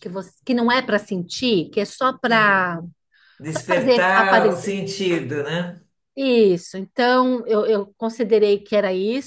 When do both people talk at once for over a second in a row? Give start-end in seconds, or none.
3.5-4.8